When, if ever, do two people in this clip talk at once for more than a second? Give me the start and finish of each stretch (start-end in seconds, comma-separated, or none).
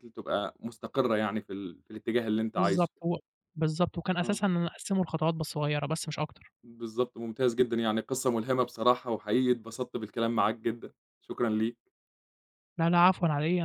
none